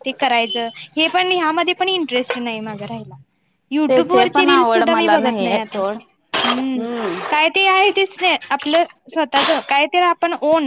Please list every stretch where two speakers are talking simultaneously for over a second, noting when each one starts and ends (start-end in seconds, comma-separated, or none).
3.9-6.0